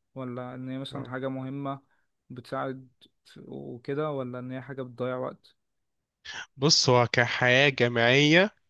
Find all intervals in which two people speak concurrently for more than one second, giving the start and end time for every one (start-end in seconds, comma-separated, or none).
none